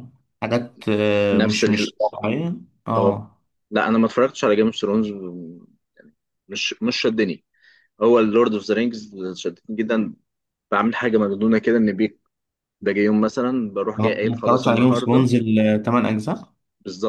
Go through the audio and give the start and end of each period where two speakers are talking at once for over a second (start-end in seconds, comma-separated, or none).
14.0-15.3